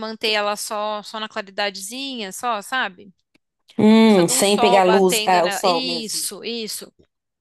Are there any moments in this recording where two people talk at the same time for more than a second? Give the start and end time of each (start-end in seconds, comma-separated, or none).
4.0-6.3